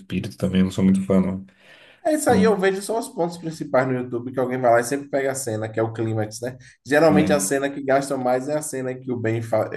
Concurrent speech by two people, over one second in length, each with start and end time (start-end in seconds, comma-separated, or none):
none